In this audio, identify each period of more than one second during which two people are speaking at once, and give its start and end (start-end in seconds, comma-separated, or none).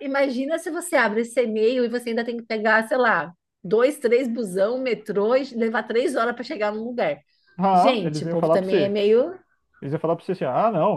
7.7-9.0